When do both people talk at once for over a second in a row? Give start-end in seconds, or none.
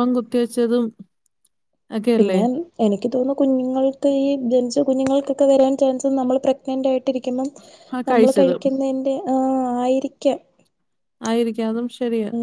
none